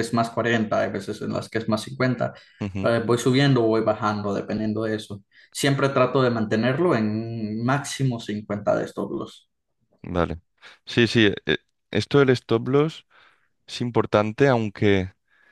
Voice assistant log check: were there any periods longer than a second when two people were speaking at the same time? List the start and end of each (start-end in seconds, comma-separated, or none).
none